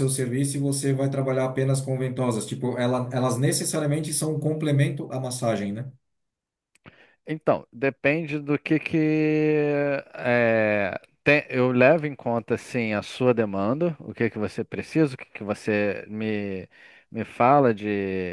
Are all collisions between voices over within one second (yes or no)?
yes